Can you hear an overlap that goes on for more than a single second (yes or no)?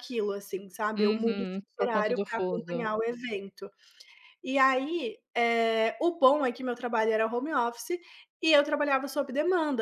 yes